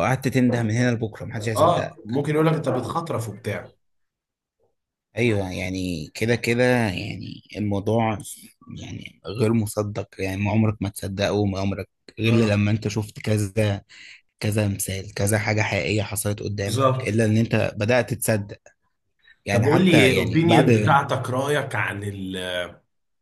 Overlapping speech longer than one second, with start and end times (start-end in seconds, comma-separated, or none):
19.5-20.7